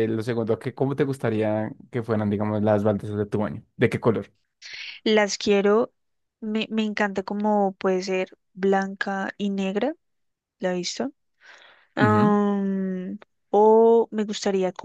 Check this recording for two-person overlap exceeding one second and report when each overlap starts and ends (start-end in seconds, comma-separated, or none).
none